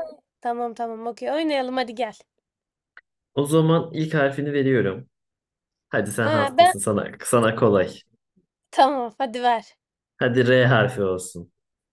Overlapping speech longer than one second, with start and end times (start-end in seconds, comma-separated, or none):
none